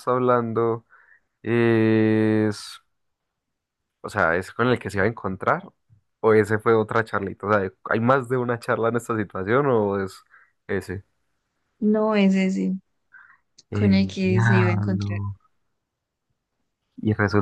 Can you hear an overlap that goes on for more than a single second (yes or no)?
yes